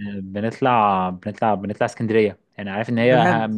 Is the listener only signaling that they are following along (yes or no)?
yes